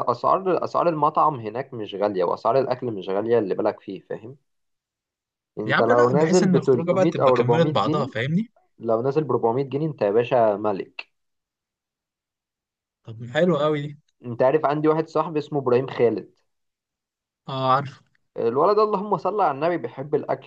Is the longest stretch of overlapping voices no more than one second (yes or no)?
no